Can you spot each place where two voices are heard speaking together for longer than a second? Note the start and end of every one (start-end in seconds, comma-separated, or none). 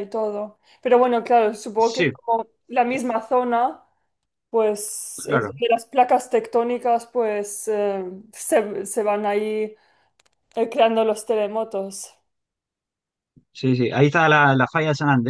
none